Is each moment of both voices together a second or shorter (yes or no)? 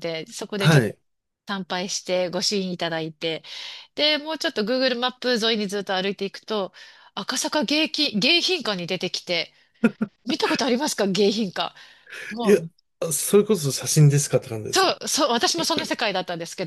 yes